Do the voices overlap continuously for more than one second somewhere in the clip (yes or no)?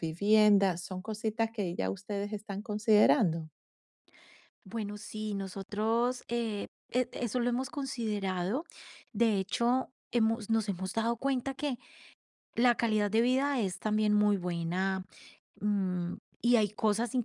no